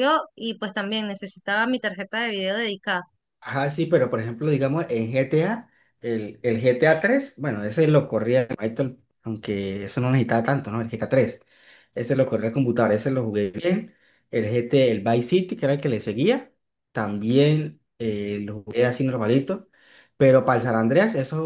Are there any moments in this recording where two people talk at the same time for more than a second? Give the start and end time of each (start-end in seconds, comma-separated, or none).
none